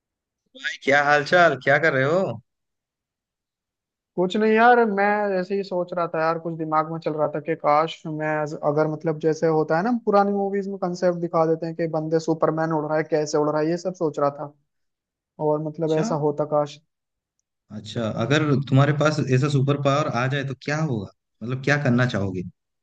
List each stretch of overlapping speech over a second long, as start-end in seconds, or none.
none